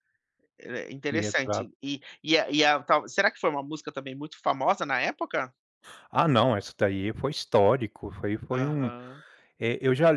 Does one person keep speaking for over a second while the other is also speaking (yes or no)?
no